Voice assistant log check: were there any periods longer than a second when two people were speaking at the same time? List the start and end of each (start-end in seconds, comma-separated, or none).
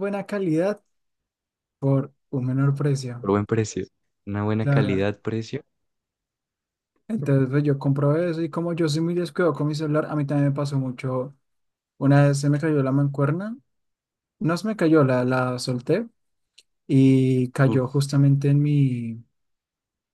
none